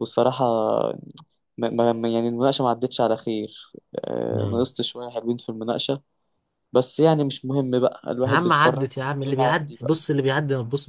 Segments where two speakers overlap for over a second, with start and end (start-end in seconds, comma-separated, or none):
8.3-10.0